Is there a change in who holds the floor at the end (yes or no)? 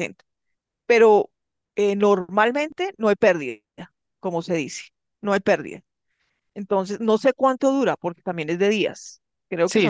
yes